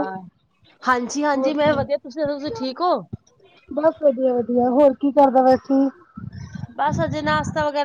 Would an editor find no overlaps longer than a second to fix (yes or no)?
yes